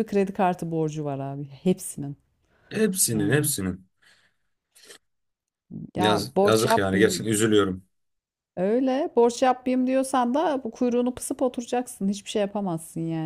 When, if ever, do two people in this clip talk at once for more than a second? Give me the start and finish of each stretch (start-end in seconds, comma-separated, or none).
6.0-7.2